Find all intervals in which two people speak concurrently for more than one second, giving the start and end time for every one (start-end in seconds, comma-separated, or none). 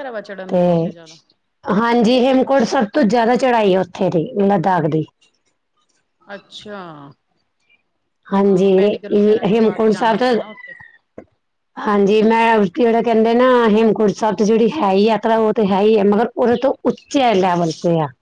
8.4-10.3